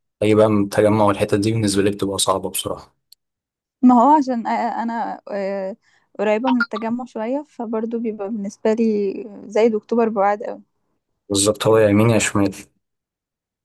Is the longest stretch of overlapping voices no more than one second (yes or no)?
yes